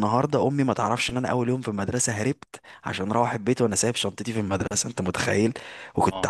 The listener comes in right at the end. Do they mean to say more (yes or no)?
no